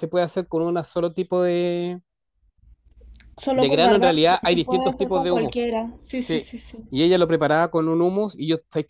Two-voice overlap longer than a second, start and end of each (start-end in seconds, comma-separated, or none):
3.5-5.5